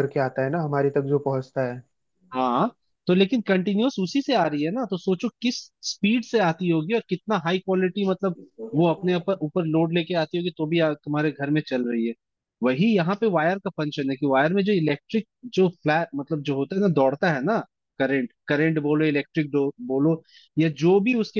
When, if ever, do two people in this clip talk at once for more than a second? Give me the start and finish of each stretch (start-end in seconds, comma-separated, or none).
none